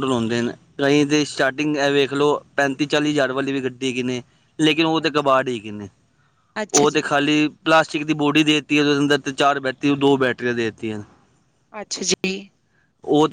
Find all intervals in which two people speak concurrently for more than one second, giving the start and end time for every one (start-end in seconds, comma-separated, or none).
none